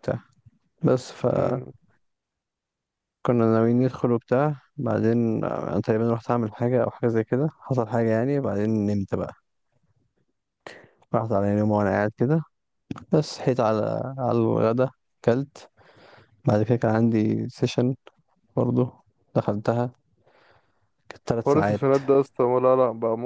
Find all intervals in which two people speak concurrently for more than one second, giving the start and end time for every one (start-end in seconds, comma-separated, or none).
none